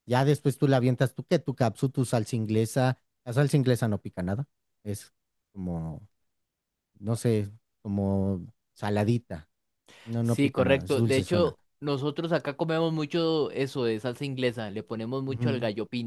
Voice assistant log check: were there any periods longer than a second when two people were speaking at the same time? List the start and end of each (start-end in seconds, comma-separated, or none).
10.2-11.6